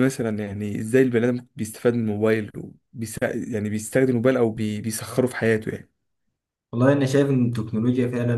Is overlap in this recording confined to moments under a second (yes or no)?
yes